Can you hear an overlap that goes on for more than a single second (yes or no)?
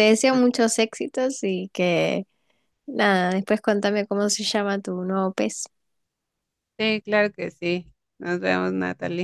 no